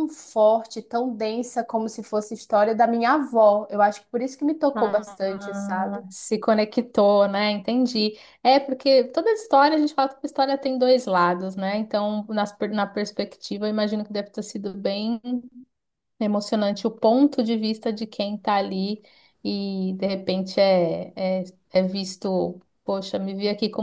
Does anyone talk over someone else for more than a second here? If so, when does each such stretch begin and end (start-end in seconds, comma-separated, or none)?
4.8-6.0